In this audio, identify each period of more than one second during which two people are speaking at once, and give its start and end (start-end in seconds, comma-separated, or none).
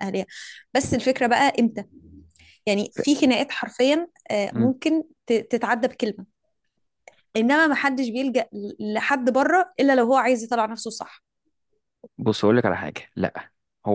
none